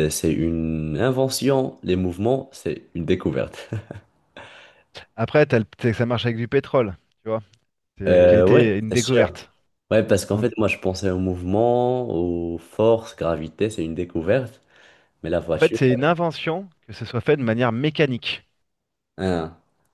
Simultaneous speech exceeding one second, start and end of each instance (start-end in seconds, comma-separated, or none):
8.1-9.4